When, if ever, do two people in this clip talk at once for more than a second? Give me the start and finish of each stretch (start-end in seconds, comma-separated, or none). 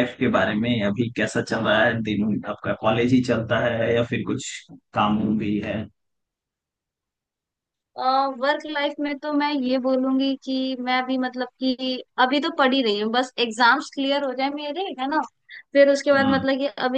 none